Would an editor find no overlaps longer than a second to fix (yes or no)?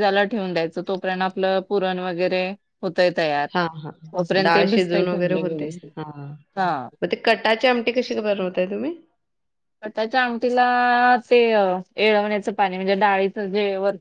yes